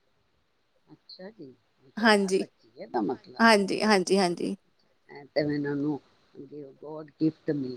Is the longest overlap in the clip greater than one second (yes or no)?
no